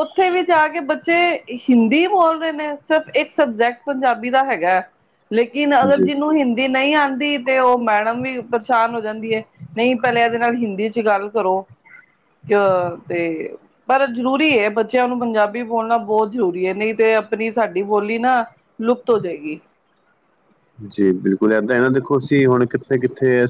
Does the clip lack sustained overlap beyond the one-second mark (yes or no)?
yes